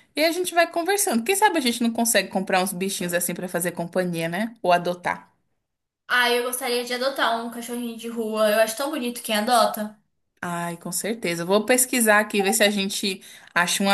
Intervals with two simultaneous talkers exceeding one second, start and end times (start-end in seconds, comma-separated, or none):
none